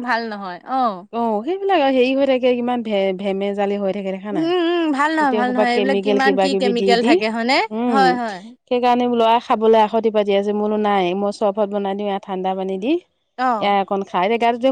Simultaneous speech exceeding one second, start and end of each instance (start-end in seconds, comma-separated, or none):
5.2-7.1